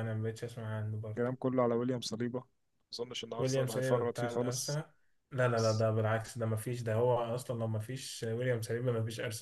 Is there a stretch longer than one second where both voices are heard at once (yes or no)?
yes